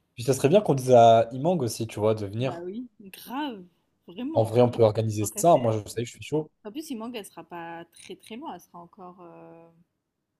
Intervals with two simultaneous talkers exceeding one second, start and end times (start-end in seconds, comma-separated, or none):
none